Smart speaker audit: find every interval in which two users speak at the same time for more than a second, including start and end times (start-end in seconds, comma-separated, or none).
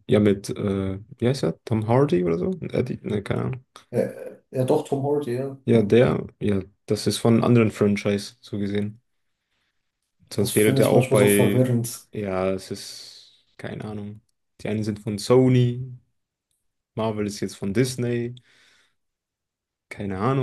10.4-11.7